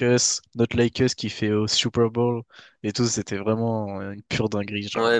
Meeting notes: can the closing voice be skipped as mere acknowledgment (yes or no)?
no